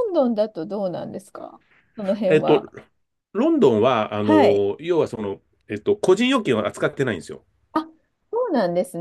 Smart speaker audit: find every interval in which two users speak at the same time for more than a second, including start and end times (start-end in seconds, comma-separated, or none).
none